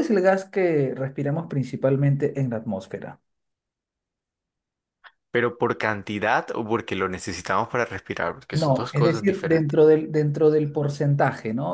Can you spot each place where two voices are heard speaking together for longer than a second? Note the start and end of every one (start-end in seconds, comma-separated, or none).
8.5-9.8